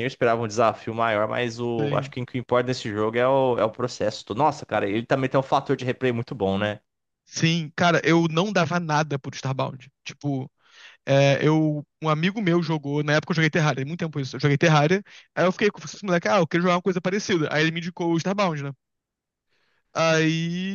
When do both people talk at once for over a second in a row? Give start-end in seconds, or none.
none